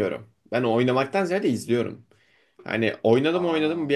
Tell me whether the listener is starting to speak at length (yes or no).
no